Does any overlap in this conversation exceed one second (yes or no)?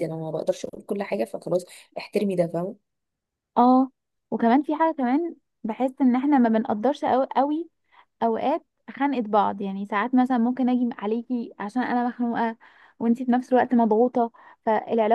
no